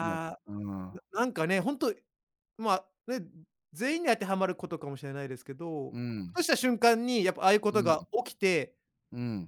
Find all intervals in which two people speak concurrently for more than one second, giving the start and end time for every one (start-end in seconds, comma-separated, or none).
none